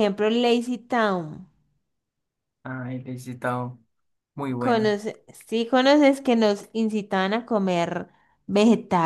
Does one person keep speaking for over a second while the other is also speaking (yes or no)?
no